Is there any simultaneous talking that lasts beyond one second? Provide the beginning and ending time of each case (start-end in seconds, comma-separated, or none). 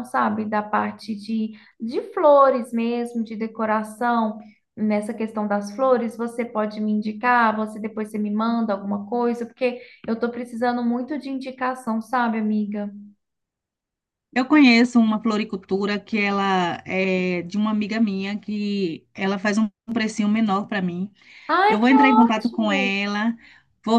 21.7-23.0